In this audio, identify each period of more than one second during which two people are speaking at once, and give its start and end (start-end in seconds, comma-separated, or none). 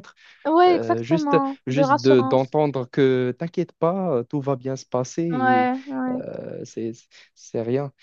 0.7-2.5